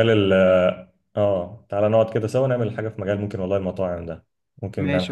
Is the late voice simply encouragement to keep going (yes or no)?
no